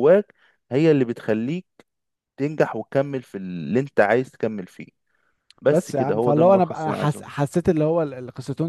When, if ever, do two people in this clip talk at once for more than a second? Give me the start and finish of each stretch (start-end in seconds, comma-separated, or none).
5.7-7.3